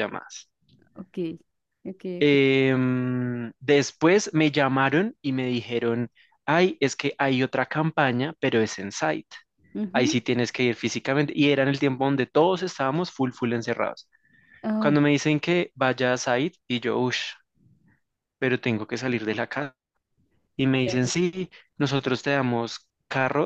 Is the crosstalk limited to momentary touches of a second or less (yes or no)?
yes